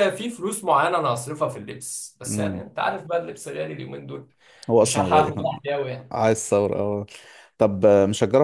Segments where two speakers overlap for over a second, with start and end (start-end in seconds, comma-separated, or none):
none